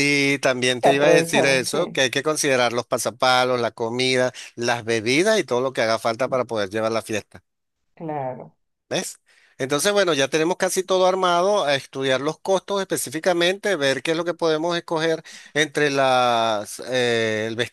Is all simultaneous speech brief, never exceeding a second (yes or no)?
no